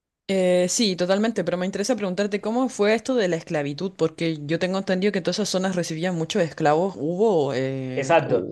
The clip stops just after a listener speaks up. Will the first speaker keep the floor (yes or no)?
no